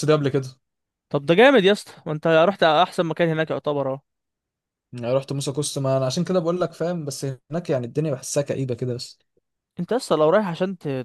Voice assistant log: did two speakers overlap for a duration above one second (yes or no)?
no